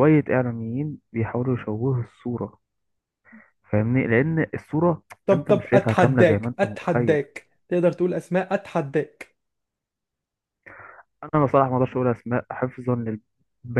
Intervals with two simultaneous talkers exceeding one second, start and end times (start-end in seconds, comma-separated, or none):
5.2-7.2